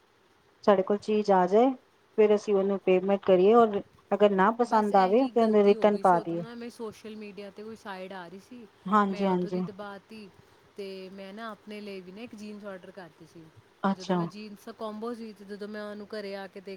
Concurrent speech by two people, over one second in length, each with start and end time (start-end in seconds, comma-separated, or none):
4.7-6.4